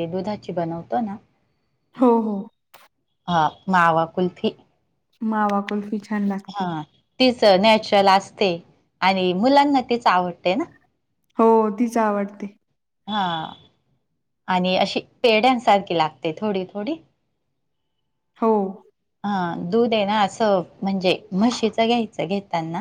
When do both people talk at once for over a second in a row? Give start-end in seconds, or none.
none